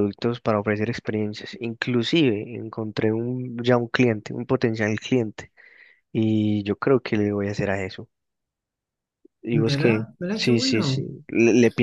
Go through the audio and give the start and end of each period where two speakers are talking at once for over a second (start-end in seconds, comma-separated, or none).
9.5-11.0